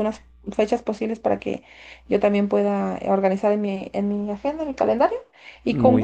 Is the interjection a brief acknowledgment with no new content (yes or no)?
yes